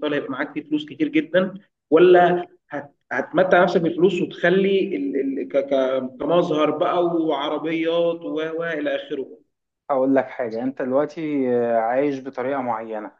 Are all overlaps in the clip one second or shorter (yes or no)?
yes